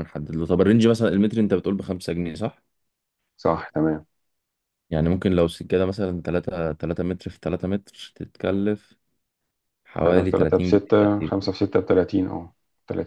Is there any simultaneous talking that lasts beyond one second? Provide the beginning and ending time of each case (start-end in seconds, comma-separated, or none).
10.1-11.5